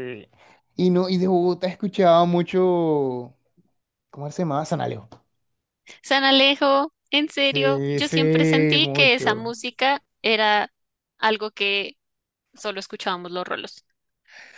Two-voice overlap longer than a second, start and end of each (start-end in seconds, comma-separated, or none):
7.4-9.4